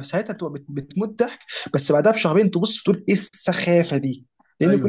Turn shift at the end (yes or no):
no